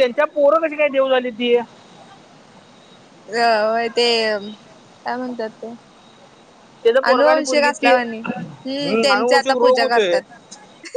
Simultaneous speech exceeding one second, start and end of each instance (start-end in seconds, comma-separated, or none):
7.1-10.2